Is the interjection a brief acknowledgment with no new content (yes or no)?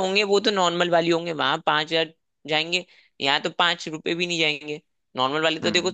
yes